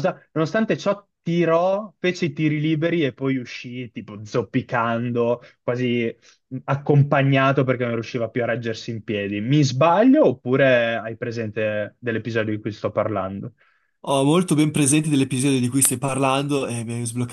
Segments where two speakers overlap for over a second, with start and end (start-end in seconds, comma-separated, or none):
none